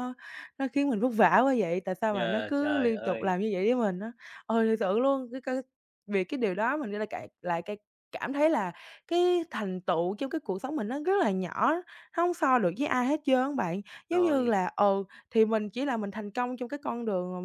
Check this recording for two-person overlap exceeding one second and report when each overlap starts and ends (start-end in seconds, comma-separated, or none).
2.1-3.3